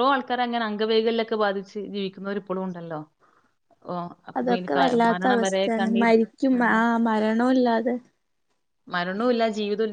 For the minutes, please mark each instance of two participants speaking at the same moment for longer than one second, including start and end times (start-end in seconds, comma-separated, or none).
4.4-6.1